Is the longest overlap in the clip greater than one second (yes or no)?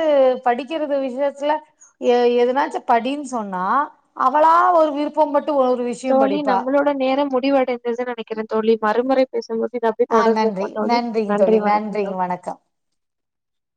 yes